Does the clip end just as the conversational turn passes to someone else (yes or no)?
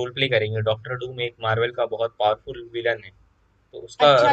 yes